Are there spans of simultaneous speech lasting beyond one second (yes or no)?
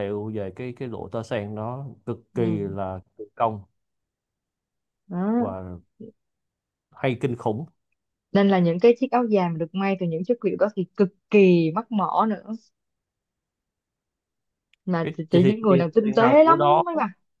yes